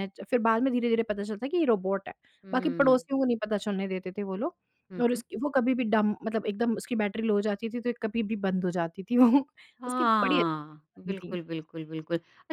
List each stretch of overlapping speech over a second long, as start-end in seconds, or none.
9.9-11.4